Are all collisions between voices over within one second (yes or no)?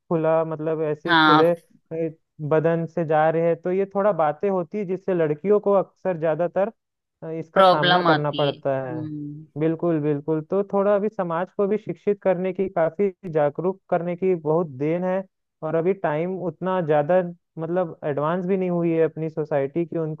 no